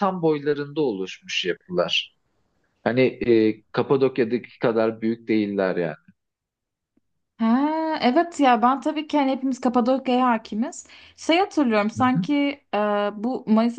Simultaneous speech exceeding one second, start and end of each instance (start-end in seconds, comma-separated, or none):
none